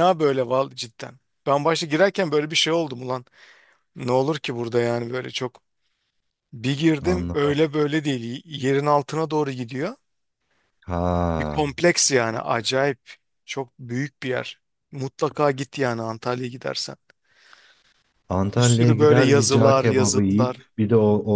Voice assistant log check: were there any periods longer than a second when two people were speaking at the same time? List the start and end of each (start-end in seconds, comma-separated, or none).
18.6-20.6